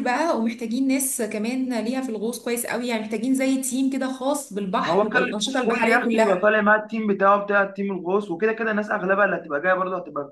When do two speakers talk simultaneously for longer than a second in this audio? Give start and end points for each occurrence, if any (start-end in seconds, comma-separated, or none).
4.8-6.5